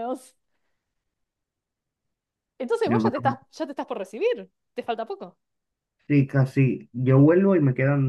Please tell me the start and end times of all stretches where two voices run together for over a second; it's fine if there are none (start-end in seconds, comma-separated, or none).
none